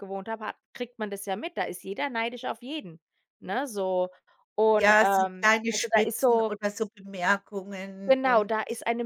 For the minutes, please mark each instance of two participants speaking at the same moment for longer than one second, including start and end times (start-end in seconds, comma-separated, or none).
4.7-6.5